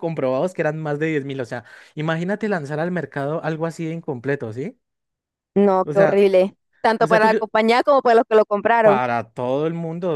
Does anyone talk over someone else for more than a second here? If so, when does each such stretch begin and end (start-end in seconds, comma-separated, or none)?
none